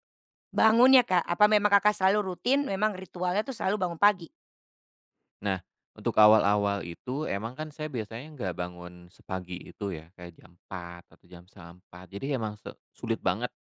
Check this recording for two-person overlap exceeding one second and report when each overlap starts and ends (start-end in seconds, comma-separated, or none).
none